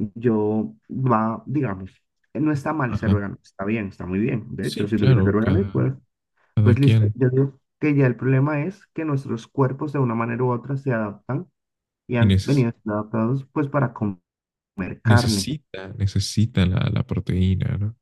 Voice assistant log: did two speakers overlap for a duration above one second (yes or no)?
yes